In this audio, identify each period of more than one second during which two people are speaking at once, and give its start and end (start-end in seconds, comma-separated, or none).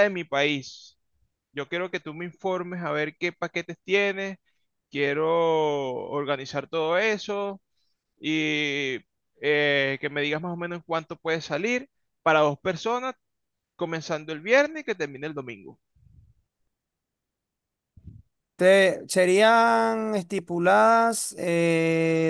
none